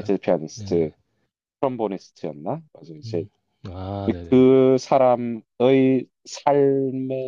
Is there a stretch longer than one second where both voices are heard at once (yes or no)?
no